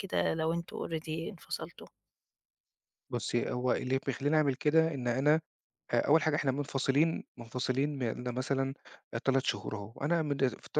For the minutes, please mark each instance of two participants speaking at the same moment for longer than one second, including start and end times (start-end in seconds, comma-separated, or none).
none